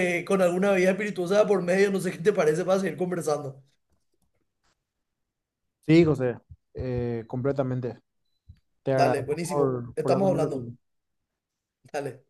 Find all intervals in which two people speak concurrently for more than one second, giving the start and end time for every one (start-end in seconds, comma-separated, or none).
8.9-10.7